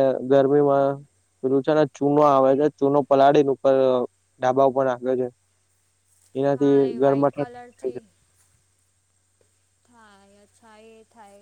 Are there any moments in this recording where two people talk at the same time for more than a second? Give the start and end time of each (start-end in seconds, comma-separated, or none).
6.6-8.0